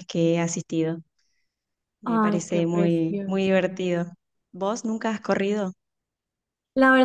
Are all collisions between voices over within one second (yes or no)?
no